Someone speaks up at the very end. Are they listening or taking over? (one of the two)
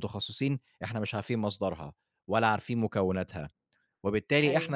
listening